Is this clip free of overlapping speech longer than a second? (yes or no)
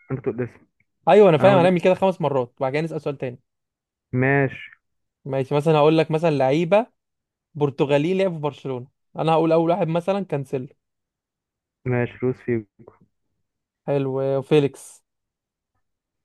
yes